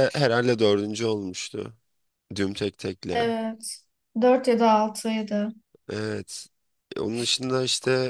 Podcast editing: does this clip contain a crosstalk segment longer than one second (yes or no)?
no